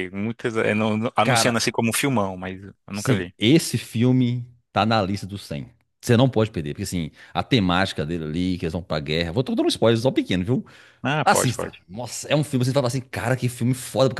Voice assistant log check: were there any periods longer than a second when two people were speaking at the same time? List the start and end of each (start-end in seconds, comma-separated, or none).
none